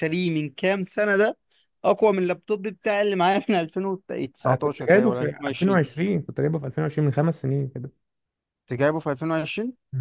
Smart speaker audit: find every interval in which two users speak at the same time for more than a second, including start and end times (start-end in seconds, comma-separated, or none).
4.5-5.8